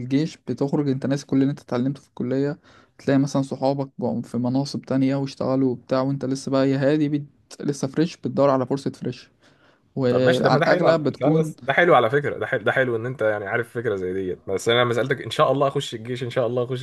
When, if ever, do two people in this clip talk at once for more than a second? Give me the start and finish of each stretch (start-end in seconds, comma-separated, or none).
10.1-11.5